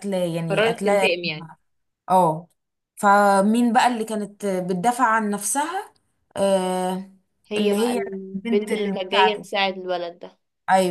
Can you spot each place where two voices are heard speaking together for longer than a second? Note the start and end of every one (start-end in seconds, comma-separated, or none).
7.6-9.5